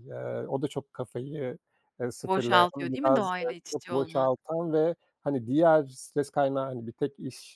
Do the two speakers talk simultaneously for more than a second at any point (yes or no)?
yes